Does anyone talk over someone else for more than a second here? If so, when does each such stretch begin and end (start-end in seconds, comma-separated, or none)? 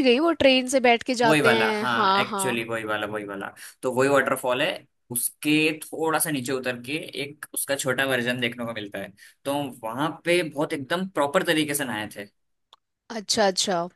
1.2-2.6